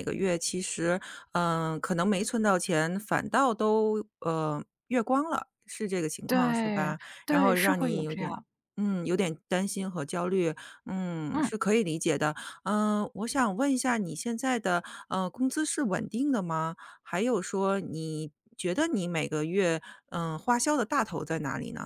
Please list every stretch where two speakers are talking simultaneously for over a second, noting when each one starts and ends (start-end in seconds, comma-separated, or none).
6.3-8.4